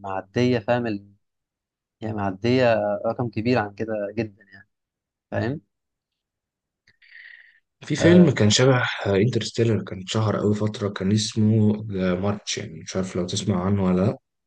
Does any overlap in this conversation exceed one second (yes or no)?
no